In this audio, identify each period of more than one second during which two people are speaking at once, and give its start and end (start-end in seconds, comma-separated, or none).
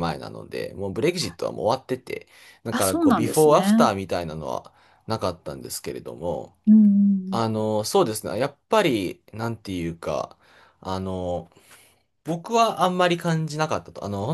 2.7-3.9